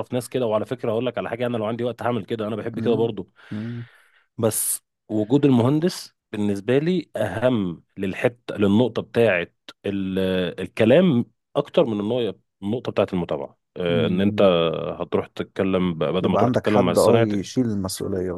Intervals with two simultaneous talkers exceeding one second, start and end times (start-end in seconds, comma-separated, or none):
16.2-17.5